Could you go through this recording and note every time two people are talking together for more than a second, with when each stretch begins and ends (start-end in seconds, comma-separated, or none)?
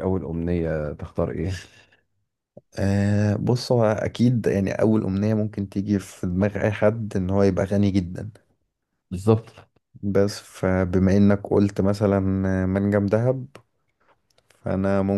none